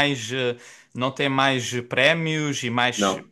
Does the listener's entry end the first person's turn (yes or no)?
no